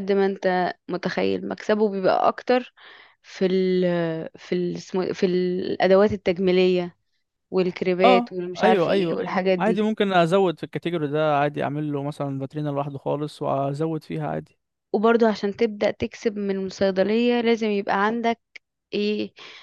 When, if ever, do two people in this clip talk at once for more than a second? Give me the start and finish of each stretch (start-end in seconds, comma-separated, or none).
8.0-9.8